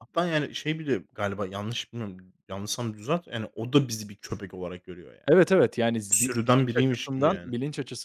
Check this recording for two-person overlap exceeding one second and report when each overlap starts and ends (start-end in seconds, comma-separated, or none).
6.1-7.5